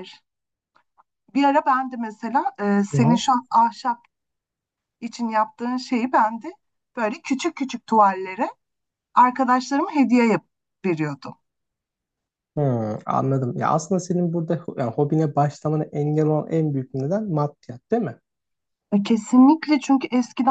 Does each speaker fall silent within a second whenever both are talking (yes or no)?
yes